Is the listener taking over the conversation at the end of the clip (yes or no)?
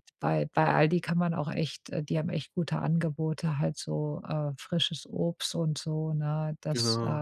no